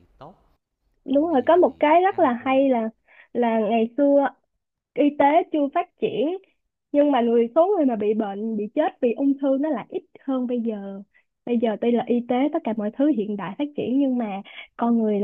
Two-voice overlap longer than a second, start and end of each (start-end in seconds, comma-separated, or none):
1.1-2.6